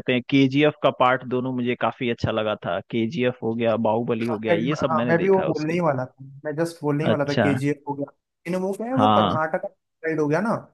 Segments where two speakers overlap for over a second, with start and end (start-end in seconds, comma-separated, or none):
4.2-5.8